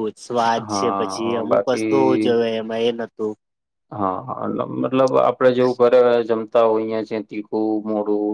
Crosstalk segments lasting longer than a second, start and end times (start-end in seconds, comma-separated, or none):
0.7-2.3